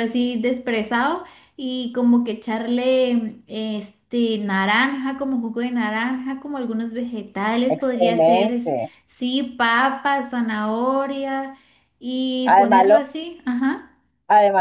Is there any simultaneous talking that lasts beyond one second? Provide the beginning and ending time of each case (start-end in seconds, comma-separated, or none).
7.7-8.9